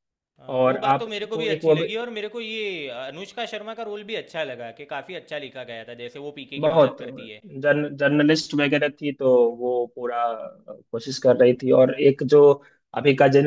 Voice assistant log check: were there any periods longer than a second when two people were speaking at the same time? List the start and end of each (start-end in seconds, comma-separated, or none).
0.6-1.9